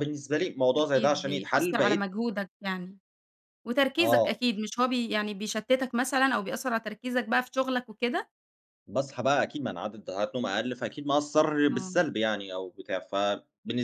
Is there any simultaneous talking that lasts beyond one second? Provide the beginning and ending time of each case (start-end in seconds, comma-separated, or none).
0.8-2.1